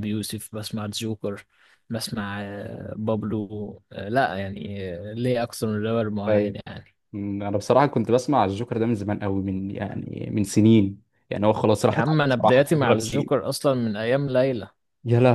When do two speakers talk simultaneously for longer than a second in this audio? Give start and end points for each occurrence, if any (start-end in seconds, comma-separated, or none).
11.9-13.5